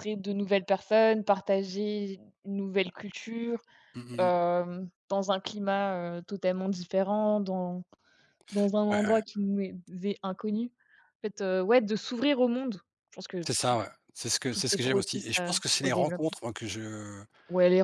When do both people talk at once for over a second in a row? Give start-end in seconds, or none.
14.5-16.4